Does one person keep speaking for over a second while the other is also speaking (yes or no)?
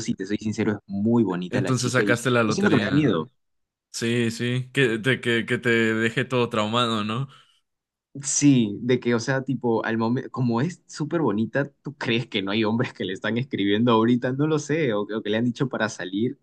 yes